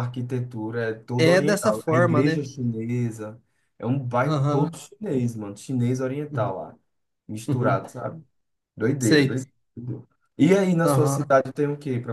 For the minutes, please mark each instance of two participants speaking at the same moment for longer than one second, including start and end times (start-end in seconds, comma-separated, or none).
1.1-2.5